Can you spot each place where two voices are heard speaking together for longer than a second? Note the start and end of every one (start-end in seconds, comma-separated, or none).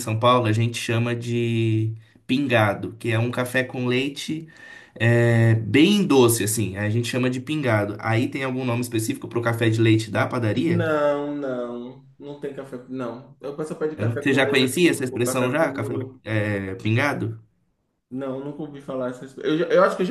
14.0-16.2